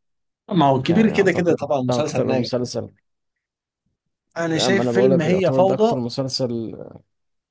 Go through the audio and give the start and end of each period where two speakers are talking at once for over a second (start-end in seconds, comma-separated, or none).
0.9-2.5, 4.5-6.0